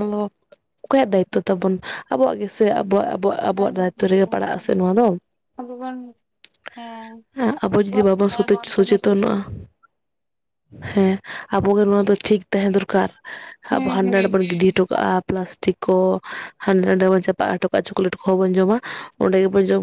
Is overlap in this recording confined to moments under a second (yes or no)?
no